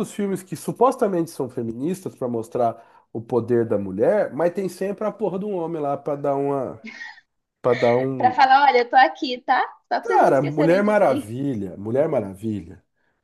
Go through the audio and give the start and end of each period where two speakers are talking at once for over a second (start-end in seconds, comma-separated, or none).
10.0-11.3